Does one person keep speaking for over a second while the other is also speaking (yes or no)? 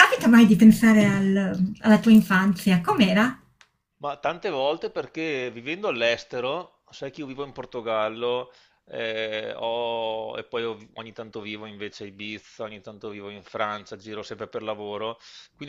no